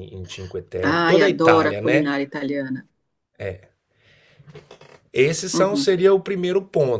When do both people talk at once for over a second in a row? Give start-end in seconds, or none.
0.8-2.1